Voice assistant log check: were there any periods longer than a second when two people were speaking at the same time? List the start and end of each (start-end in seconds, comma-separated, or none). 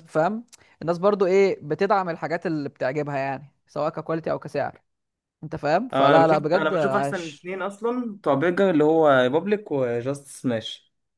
5.9-7.5